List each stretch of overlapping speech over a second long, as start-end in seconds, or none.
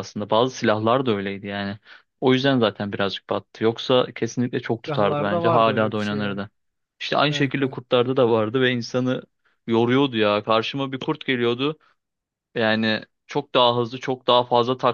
4.8-6.4